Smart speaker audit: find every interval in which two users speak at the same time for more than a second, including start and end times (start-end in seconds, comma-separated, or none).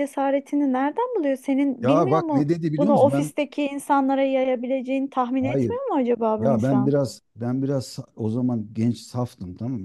1.8-3.3